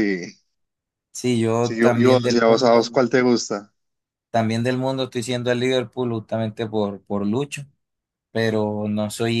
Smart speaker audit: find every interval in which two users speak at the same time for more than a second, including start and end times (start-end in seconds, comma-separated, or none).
1.6-3.0